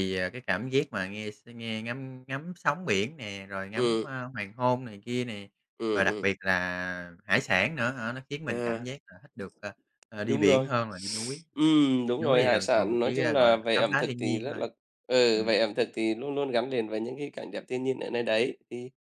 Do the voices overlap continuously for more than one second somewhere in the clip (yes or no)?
yes